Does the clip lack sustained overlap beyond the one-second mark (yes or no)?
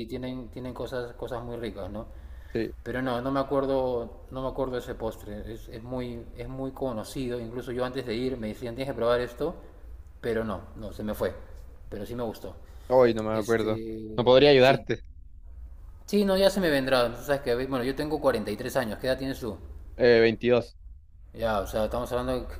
no